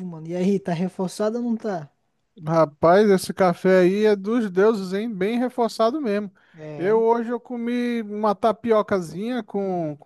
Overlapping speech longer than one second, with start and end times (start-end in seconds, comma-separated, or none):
none